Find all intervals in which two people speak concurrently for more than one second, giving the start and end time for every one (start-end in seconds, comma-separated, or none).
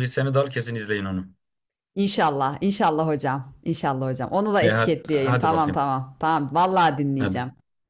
4.6-5.8